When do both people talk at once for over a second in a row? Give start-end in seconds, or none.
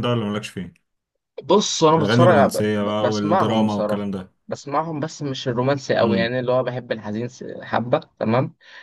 2.0-4.0